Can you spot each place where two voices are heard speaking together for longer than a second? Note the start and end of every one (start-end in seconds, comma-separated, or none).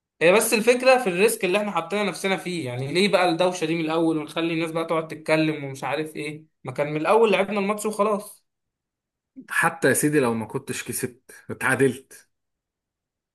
none